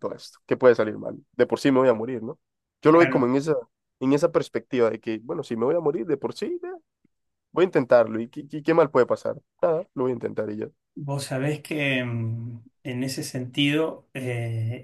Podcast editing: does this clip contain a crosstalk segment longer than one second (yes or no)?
no